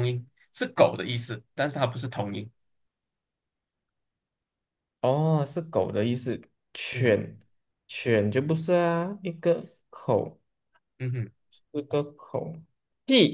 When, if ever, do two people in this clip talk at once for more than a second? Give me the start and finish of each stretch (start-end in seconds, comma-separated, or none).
none